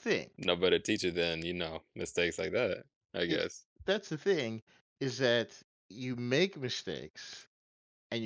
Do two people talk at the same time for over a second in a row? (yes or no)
no